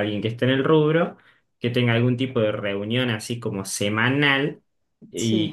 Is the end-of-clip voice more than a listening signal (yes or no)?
no